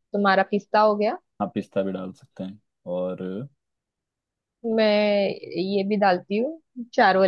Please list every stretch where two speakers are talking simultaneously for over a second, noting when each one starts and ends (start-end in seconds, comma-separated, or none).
none